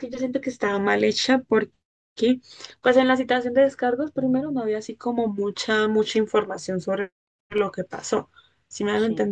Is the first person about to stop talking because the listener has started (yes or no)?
no